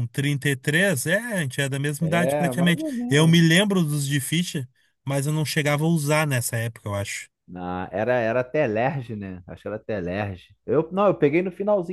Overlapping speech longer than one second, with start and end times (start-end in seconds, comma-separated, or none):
2.0-3.4